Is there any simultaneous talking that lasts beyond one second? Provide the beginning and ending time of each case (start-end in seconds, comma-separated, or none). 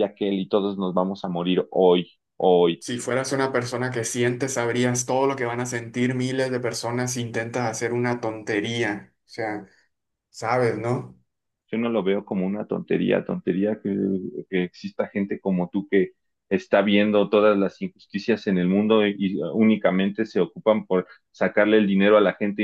none